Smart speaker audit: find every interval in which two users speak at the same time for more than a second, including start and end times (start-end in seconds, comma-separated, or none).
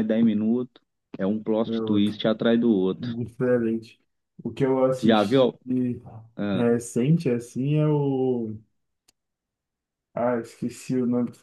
none